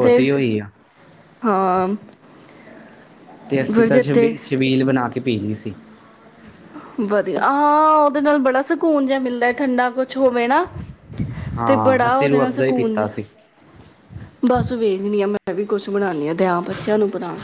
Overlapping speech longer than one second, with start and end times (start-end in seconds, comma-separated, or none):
11.7-13.1